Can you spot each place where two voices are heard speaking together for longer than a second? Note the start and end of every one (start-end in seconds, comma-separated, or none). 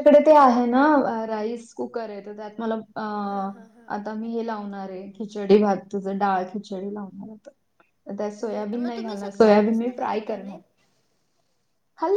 8.5-10.6